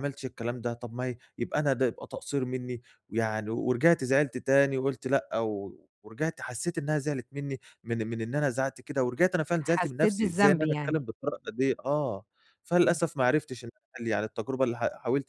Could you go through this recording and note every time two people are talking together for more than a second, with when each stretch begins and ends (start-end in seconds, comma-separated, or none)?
9.6-11.0